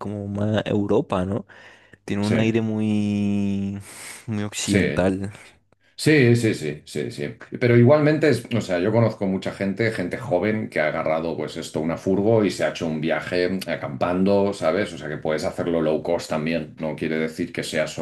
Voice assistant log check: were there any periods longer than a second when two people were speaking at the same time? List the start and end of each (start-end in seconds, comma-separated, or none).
none